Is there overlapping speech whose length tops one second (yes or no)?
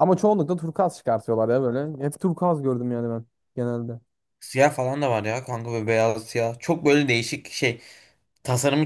no